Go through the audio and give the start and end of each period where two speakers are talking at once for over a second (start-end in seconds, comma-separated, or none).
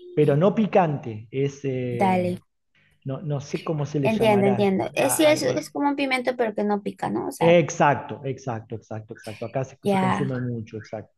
4.0-5.8